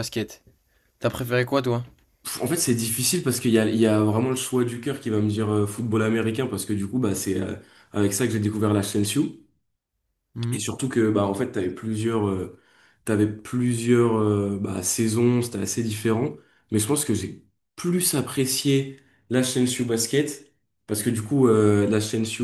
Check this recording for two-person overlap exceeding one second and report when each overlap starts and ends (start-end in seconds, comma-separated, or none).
none